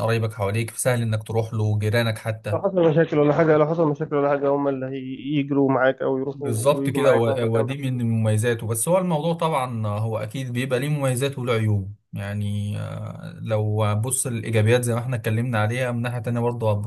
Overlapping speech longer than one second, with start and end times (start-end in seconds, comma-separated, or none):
6.3-7.7